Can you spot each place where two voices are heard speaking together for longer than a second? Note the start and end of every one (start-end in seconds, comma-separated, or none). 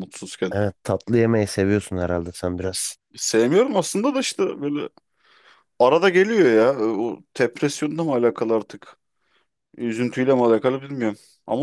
none